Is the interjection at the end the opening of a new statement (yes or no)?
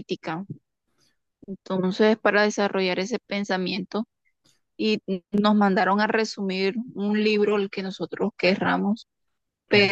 no